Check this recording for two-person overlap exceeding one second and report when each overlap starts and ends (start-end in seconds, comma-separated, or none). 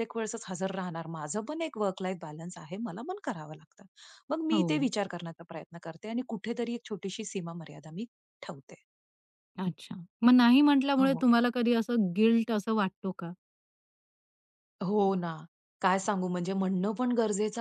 none